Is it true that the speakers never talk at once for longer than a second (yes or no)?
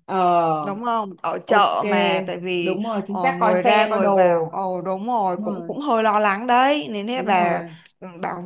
no